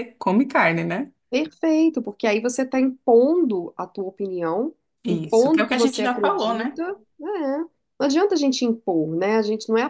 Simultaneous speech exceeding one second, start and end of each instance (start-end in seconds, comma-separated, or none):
5.0-6.8